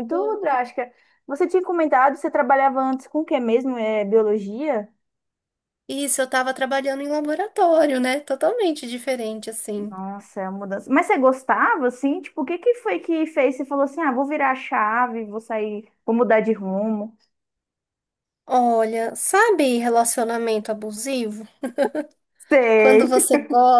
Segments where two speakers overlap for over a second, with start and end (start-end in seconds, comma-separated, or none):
none